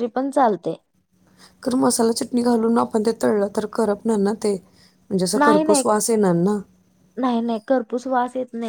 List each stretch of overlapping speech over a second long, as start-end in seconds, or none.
none